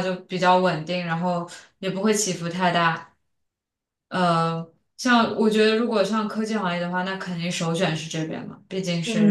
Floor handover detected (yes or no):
yes